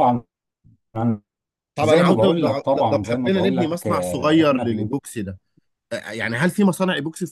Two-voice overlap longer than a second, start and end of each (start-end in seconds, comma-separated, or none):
1.8-4.9